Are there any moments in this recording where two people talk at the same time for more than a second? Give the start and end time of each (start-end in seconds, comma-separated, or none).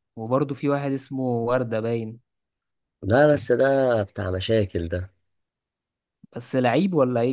none